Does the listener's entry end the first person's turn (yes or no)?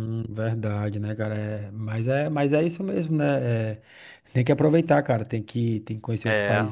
no